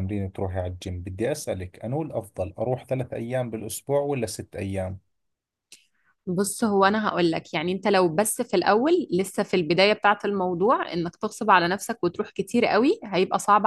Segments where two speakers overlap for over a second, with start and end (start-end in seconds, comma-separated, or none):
none